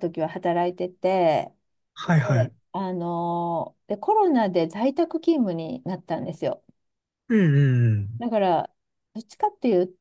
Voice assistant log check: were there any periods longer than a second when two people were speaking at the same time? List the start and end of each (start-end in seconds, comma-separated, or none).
none